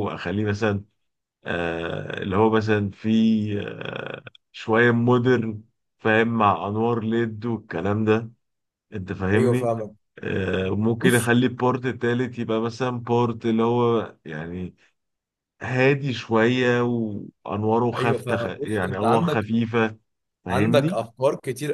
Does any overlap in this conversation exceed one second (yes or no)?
yes